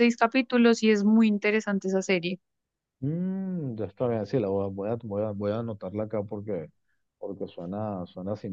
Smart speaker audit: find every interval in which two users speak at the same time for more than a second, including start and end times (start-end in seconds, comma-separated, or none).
none